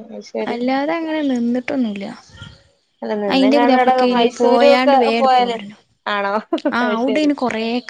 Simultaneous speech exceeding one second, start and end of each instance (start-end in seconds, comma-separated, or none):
3.3-5.5